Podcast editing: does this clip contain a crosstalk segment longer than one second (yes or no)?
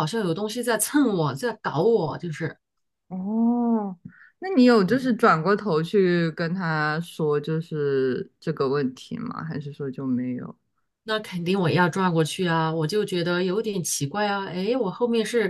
no